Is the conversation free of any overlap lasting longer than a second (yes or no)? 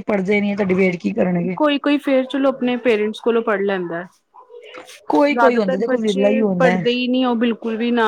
no